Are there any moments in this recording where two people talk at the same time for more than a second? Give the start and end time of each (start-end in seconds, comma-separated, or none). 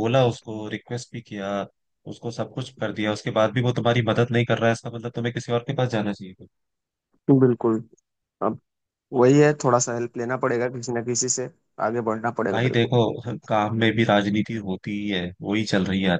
none